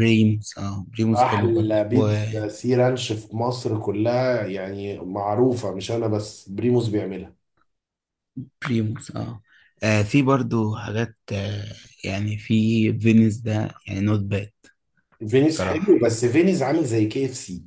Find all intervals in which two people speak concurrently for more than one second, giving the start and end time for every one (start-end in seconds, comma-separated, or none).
1.1-2.4